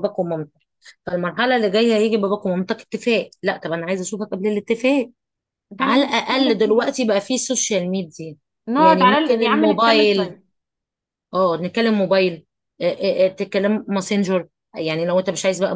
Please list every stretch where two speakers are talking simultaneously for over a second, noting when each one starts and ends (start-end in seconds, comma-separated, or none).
5.8-7.0, 8.8-10.3